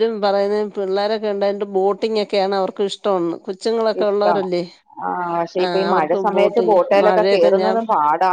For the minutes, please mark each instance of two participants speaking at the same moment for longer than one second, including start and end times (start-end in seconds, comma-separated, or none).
5.6-7.5